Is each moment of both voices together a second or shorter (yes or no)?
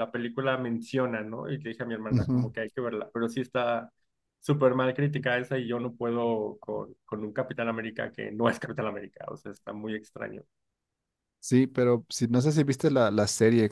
yes